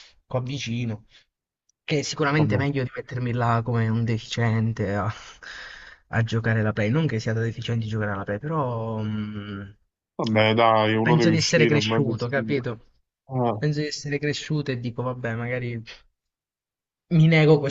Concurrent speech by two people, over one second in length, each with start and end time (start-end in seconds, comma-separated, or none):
11.0-12.5